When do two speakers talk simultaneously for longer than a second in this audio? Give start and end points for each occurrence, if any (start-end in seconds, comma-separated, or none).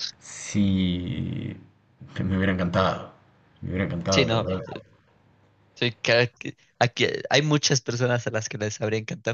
none